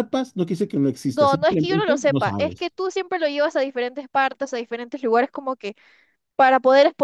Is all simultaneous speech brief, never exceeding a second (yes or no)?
no